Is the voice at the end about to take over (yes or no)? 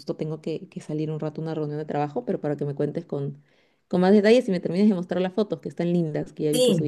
yes